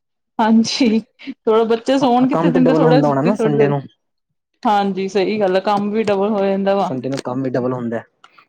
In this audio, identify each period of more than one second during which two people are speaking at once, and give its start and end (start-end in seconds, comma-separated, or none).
2.3-3.7